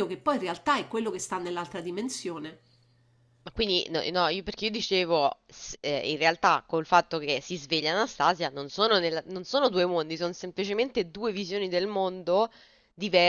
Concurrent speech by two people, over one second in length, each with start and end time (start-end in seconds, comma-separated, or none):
none